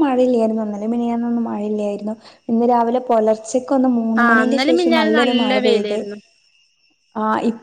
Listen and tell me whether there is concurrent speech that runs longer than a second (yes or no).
yes